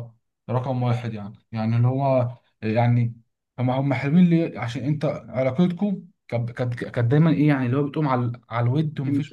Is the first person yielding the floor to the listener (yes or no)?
no